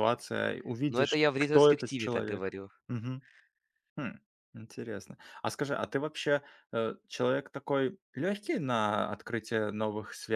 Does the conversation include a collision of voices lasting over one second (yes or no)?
yes